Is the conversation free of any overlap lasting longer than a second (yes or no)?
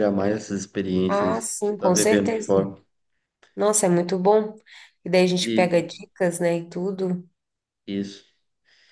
no